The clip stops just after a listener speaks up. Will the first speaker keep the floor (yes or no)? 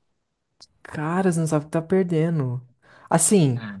yes